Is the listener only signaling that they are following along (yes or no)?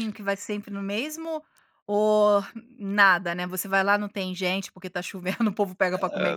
no